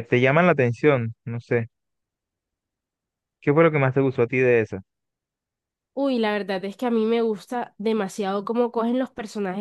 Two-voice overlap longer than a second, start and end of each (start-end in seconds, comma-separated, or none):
none